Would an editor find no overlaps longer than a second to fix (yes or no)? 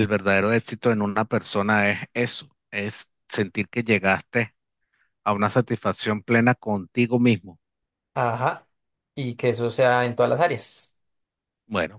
yes